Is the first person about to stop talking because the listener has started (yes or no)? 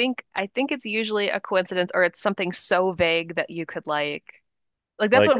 no